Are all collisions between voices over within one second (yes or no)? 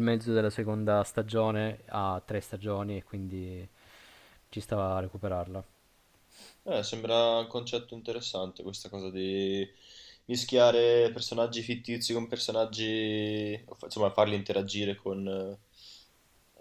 yes